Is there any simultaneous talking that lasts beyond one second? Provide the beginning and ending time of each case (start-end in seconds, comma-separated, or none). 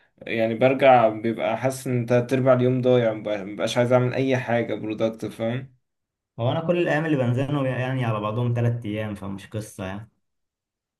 none